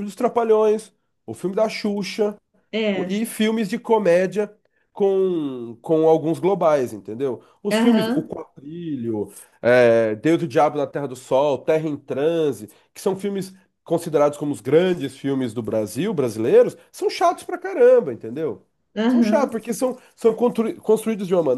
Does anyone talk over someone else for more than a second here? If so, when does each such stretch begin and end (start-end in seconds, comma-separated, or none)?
none